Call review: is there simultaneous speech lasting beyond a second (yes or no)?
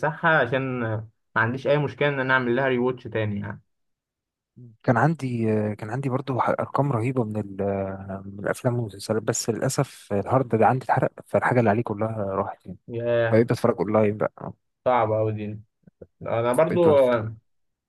no